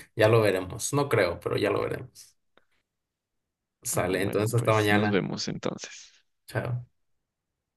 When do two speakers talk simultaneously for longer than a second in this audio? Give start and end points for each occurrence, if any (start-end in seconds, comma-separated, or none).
4.0-5.2